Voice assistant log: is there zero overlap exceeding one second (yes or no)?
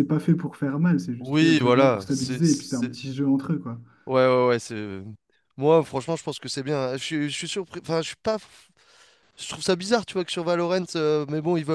no